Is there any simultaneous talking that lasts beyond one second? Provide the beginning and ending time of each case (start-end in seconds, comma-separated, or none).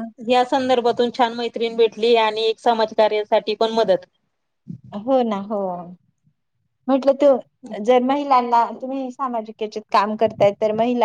none